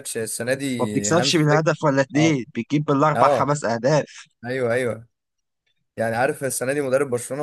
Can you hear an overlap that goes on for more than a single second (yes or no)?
yes